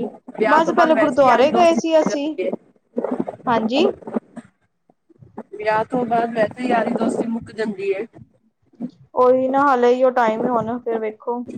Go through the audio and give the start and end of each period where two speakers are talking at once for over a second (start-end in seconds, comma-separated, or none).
0.9-2.4